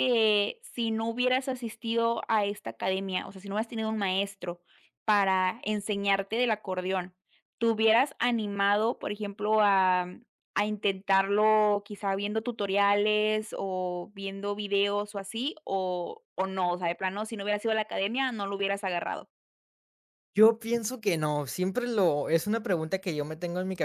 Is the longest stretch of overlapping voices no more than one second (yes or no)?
yes